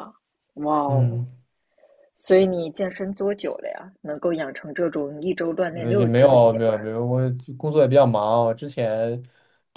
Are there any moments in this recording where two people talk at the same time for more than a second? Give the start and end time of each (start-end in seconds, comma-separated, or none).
5.7-6.9